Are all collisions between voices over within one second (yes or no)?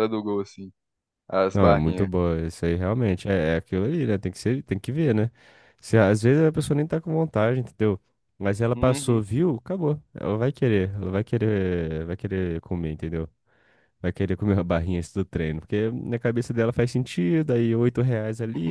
yes